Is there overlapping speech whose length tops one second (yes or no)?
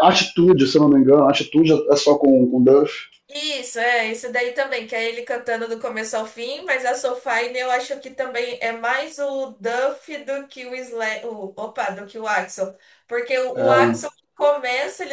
no